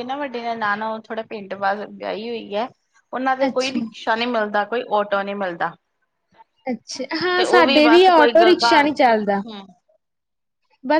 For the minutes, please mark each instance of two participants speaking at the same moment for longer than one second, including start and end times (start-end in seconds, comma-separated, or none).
7.4-9.4